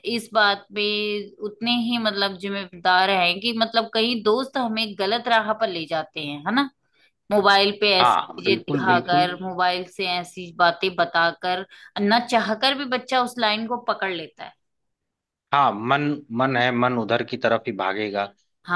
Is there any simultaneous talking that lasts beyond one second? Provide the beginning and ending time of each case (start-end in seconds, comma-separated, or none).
8.0-9.3